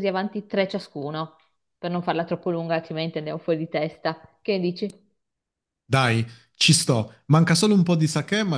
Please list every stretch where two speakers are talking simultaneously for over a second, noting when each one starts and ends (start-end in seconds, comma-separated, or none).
none